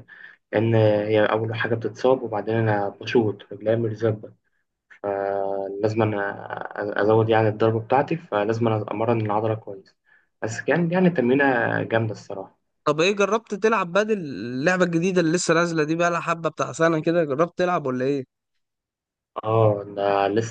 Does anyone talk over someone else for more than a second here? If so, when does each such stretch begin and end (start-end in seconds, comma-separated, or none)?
none